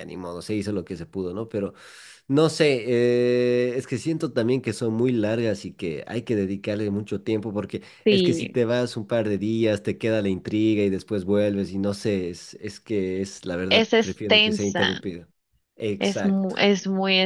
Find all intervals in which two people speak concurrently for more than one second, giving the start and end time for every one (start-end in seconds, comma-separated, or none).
13.7-15.0